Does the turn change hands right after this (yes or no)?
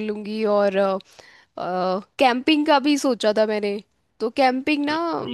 no